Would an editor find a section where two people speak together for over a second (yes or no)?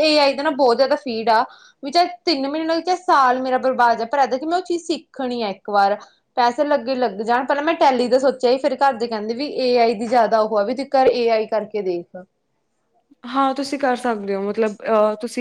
no